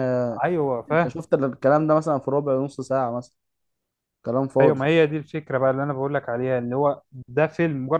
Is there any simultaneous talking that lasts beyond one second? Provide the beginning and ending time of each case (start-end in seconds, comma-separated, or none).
none